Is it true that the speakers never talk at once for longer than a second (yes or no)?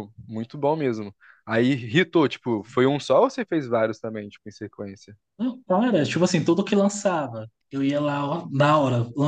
yes